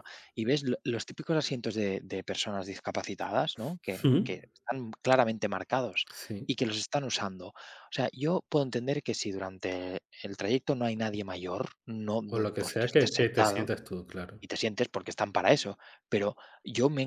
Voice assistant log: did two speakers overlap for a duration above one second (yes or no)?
yes